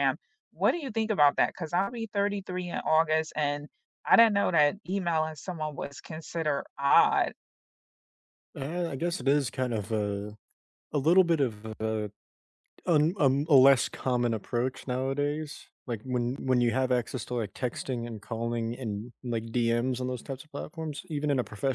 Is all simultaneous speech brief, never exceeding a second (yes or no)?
yes